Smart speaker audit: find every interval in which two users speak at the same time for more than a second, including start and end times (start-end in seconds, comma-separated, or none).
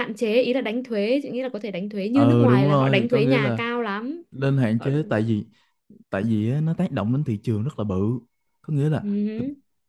2.1-3.6